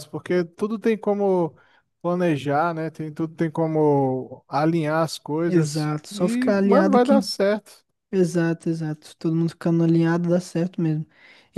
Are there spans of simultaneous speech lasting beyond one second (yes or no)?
yes